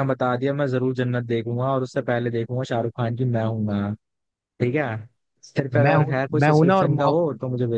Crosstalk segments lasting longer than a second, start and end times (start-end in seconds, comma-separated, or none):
5.7-7.3